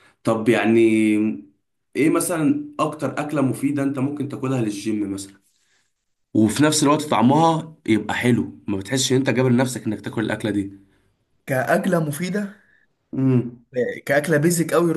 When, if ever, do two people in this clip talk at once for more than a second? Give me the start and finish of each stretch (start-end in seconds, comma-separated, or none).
none